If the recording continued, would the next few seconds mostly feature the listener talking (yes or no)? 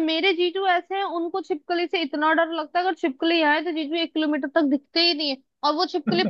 no